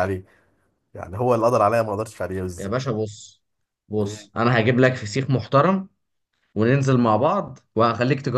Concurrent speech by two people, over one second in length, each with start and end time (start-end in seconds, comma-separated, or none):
none